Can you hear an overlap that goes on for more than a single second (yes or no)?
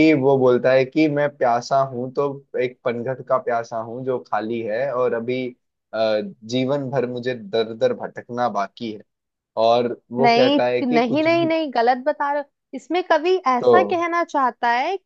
yes